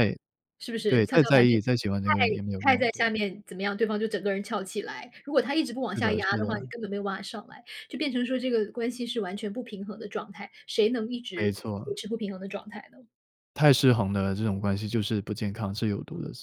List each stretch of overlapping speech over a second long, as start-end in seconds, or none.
0.9-3.0